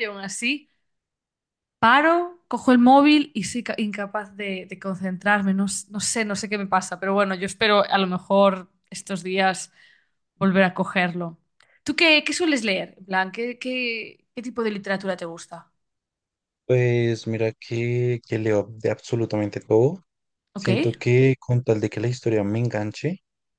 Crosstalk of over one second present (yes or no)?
no